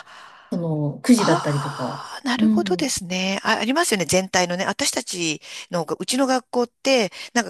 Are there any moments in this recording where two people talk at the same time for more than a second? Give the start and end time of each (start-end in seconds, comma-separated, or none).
1.2-2.9